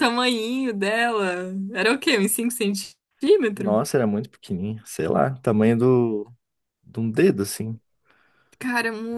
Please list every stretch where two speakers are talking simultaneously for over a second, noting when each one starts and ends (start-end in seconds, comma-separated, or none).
none